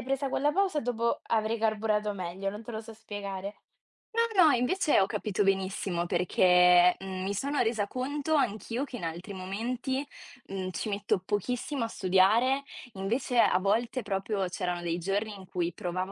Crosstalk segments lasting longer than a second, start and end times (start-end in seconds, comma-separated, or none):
none